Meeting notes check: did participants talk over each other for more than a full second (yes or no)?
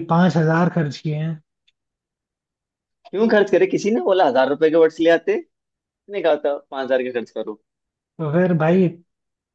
no